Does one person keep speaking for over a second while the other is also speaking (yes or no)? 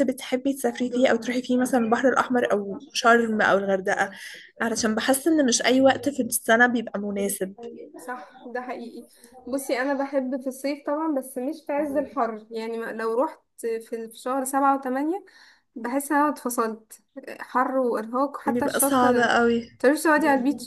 no